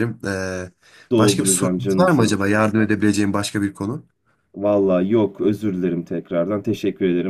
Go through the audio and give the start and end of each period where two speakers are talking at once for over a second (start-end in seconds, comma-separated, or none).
1.2-2.4